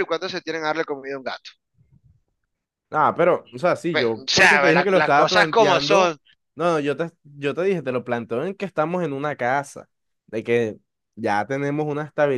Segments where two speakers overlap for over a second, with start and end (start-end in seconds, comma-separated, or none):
3.9-6.2